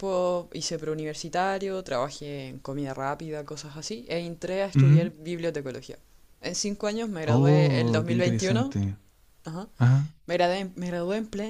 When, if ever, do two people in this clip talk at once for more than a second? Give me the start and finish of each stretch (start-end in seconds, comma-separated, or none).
7.2-8.7